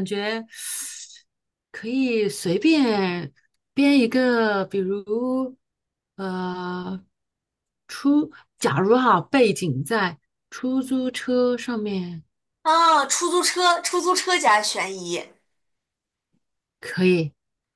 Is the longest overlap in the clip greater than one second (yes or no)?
no